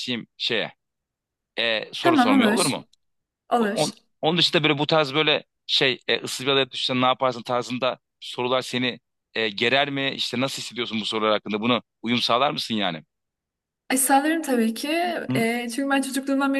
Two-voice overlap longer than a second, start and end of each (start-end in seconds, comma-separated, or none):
none